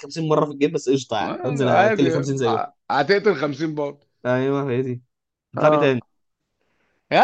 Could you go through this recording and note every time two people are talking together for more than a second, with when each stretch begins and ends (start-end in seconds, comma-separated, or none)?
1.2-2.6